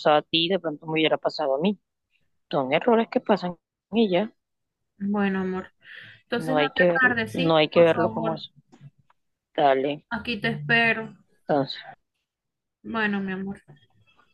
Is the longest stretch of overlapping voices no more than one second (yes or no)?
no